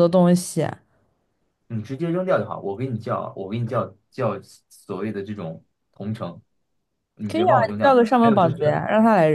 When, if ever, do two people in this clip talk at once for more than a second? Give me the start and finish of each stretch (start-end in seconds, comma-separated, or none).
7.3-8.8